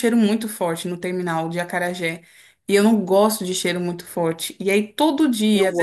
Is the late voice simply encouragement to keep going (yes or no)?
yes